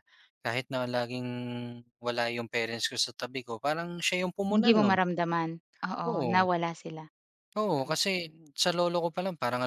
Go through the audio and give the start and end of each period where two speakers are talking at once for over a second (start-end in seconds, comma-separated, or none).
none